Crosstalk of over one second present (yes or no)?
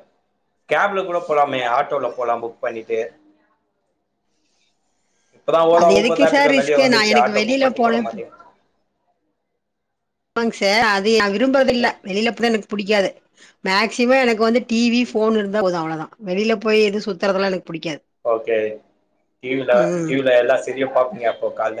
yes